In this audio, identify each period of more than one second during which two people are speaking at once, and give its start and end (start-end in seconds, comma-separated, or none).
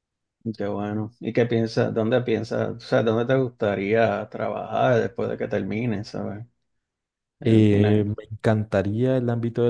none